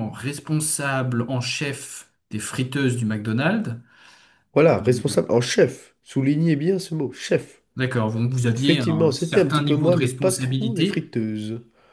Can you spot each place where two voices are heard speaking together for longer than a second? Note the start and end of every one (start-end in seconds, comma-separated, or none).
8.5-11.1